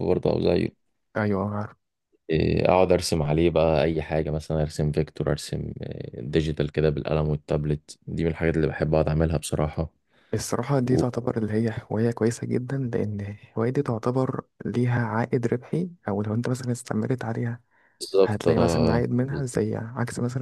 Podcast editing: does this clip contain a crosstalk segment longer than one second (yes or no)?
yes